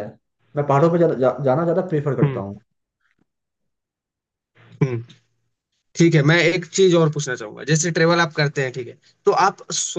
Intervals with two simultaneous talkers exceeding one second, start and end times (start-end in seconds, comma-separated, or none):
none